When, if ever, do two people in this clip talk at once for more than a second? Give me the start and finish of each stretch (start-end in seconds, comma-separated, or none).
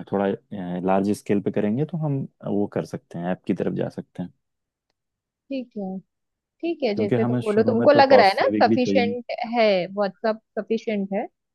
7.0-9.2